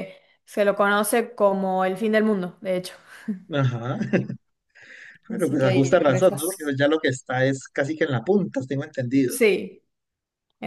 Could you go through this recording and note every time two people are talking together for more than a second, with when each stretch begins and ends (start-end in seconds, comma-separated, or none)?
5.3-6.7